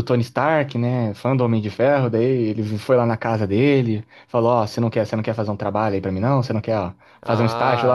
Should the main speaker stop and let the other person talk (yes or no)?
yes